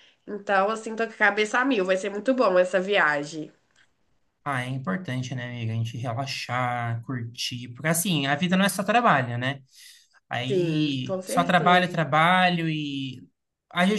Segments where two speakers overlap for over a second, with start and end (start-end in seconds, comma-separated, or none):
10.5-11.9